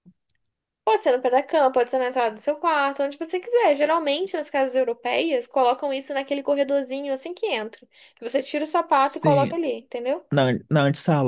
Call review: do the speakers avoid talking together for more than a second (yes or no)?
yes